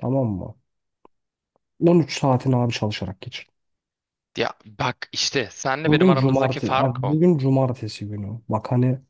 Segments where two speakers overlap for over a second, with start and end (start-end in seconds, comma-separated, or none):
5.8-7.2